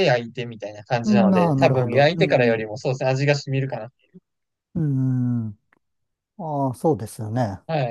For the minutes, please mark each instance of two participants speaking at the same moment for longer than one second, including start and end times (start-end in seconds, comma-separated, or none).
1.0-2.6